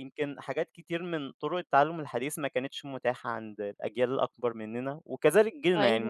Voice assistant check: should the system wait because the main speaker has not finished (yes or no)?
yes